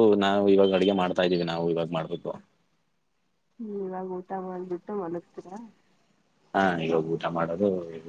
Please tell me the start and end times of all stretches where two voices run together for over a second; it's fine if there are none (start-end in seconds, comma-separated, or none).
none